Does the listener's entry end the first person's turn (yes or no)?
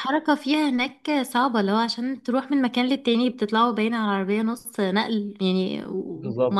yes